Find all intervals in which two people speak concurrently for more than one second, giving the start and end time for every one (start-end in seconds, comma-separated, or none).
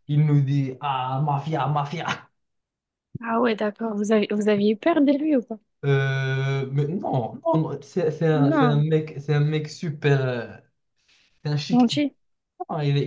none